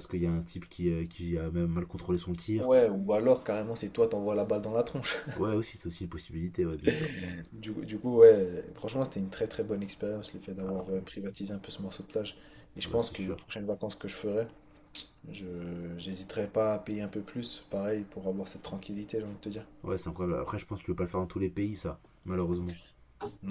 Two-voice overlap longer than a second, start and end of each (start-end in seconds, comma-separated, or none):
none